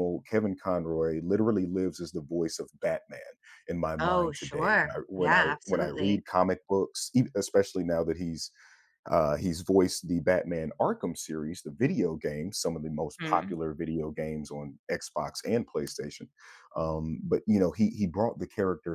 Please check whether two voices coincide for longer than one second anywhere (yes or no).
yes